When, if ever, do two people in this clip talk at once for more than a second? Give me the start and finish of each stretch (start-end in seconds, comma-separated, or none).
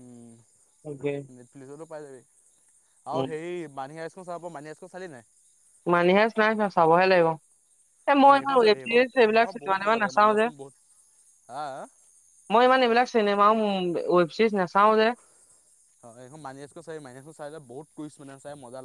8.2-10.4